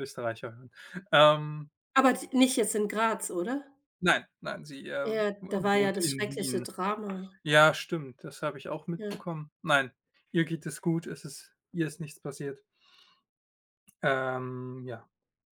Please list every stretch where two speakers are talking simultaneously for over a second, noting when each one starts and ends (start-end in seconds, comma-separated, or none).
5.0-6.7